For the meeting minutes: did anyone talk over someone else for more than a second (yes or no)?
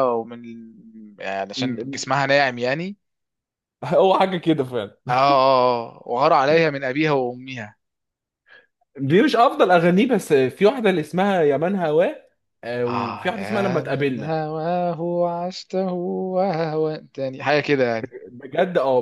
yes